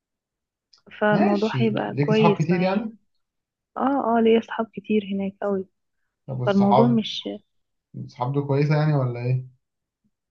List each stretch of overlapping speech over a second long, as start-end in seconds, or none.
1.1-2.9